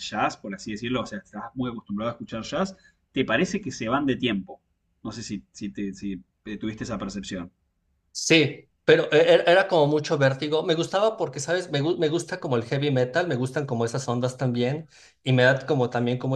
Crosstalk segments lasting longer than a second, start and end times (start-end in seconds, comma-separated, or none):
none